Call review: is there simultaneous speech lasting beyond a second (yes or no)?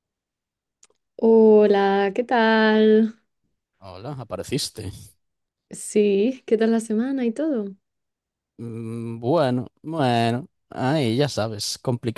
no